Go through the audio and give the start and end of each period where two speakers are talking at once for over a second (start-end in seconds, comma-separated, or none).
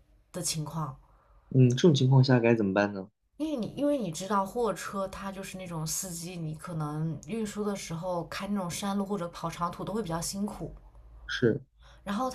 none